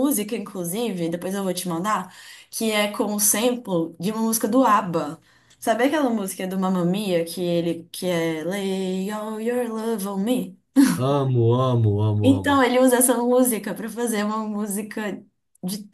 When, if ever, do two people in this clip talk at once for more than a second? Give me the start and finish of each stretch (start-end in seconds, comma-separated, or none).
none